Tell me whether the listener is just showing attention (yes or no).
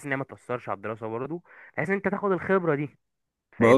no